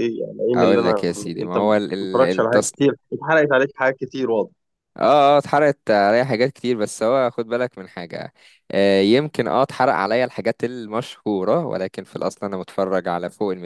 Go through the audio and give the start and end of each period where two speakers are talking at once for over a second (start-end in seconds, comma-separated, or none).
0.6-2.7